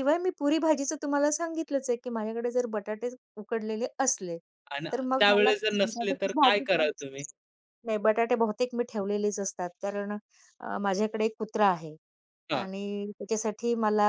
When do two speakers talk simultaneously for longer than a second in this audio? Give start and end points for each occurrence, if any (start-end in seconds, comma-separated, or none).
4.9-6.9